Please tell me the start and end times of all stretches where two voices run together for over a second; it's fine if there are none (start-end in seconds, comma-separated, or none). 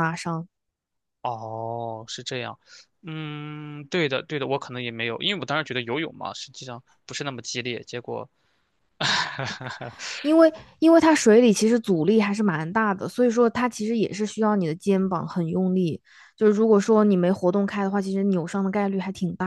none